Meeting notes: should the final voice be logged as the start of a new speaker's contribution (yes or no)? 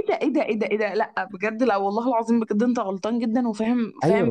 yes